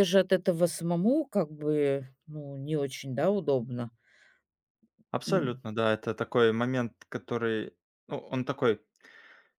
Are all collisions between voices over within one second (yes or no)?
yes